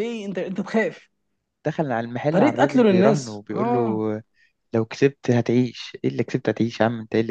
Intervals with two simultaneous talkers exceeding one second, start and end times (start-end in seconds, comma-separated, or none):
2.3-4.0